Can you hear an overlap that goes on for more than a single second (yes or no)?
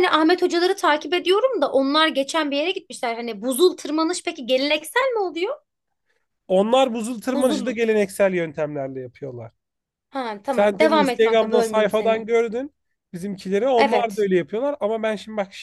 yes